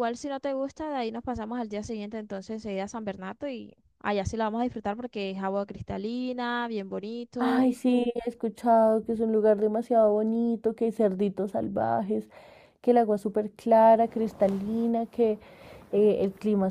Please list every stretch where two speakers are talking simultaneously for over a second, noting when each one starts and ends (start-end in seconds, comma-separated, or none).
none